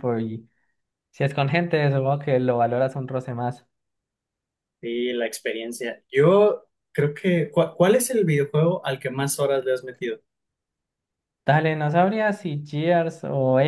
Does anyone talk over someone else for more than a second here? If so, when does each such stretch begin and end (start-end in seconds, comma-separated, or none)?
none